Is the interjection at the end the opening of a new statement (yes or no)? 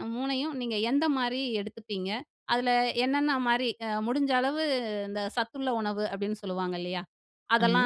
no